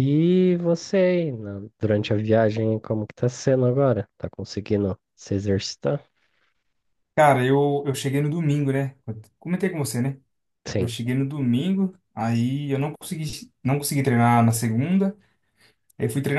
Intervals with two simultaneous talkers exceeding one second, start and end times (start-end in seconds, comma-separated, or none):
none